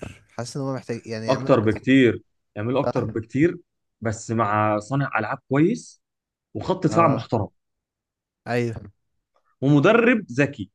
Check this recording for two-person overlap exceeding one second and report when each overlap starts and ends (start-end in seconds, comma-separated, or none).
none